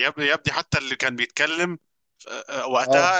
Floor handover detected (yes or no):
no